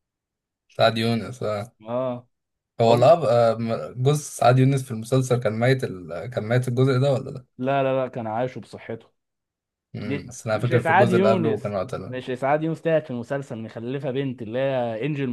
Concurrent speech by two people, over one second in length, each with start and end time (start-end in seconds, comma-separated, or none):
10.0-12.2